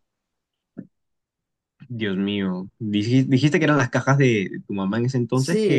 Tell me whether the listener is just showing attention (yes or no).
no